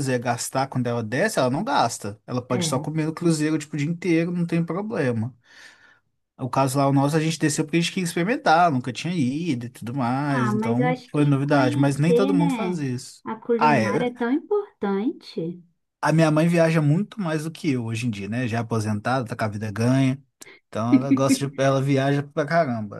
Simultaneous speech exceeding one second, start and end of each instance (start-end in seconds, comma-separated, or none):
10.3-12.9